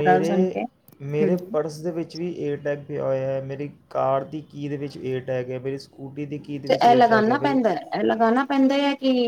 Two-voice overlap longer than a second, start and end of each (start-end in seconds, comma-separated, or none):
none